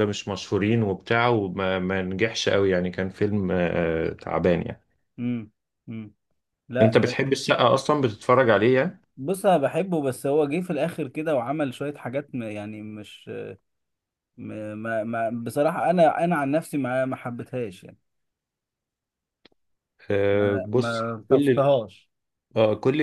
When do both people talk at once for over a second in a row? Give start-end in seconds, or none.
20.3-21.7